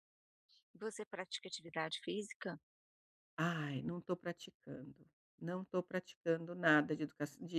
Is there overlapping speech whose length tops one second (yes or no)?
no